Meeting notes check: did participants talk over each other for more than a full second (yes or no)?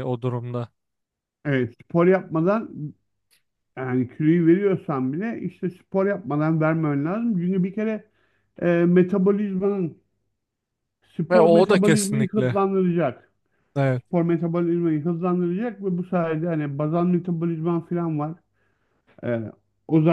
yes